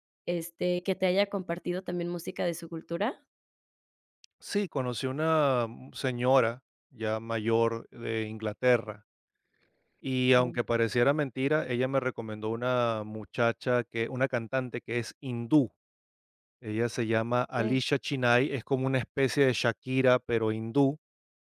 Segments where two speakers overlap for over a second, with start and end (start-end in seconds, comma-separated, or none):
none